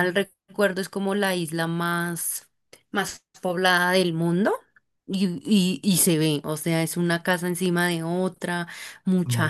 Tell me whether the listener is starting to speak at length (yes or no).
no